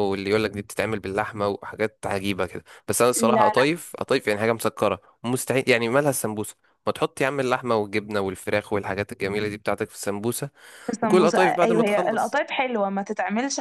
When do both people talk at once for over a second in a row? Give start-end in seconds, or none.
11.0-12.4